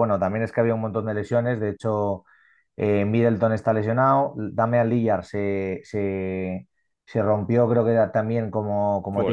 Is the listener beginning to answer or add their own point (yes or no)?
yes